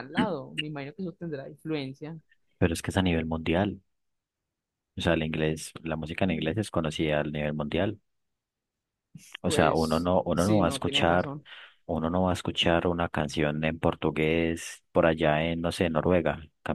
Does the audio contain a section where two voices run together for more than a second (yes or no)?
yes